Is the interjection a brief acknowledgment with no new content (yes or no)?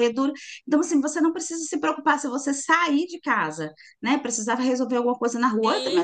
yes